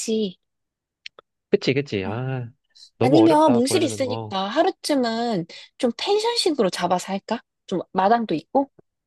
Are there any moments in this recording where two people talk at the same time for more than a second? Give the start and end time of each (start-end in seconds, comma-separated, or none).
3.0-4.3